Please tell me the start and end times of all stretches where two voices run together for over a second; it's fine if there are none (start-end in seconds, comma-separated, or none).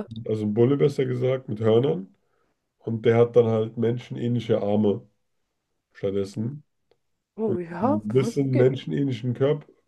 7.4-8.8